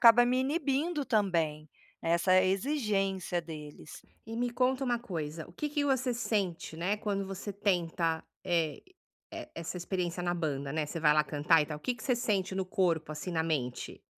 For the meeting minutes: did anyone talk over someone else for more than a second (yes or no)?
no